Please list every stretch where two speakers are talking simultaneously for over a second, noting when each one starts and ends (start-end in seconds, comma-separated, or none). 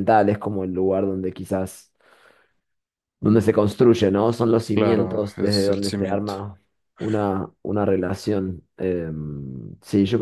4.7-6.4